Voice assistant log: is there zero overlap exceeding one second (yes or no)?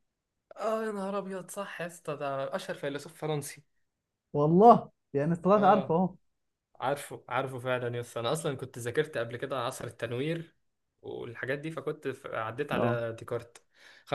yes